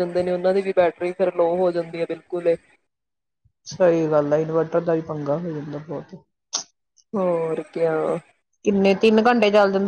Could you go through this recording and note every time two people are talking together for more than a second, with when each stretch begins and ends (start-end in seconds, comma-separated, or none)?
none